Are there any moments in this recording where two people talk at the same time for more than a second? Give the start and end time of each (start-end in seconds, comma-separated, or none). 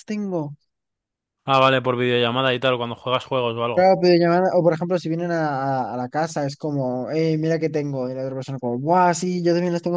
none